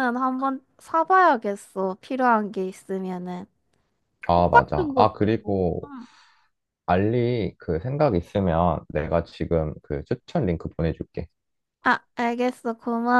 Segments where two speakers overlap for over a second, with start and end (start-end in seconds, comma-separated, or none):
4.3-5.9